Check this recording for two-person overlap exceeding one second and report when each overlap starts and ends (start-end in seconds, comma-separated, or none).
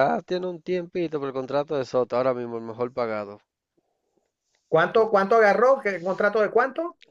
none